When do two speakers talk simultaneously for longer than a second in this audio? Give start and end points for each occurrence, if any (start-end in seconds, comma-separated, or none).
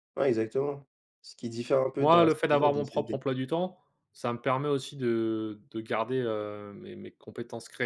2.0-3.2